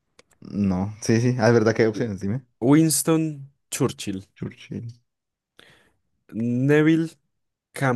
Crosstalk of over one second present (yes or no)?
no